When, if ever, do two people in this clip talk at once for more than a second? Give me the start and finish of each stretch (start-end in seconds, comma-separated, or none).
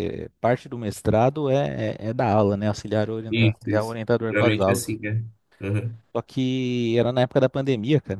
3.3-5.0